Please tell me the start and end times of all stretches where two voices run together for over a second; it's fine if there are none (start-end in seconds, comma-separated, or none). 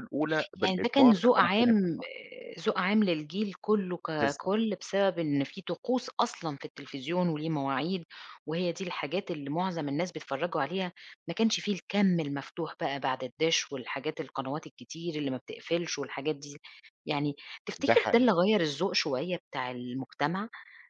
0.6-2.0